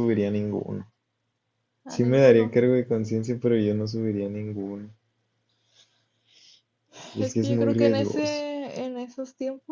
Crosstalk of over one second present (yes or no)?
yes